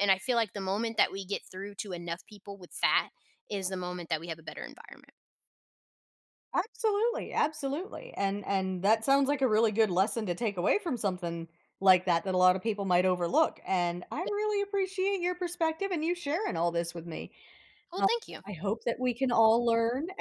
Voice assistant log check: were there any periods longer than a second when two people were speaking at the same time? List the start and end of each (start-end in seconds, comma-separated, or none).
none